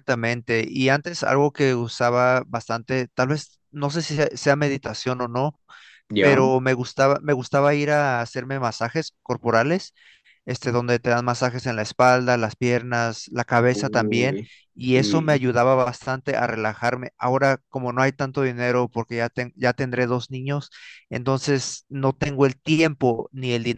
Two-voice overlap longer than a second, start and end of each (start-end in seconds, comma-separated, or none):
13.7-15.4